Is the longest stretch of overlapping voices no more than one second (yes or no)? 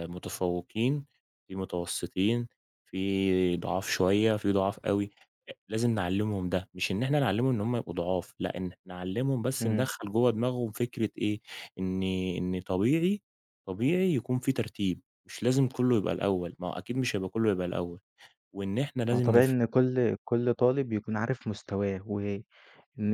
yes